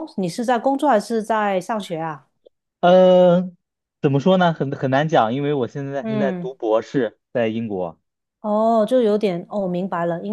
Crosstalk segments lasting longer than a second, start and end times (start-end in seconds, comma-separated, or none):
none